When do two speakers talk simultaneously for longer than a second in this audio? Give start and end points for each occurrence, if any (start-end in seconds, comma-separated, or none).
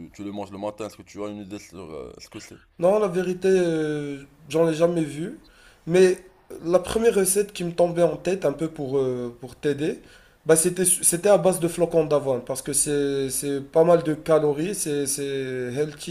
none